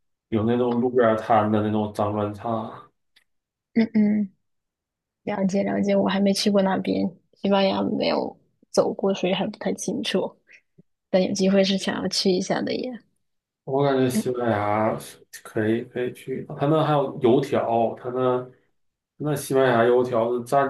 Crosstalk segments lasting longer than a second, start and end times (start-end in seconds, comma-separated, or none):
none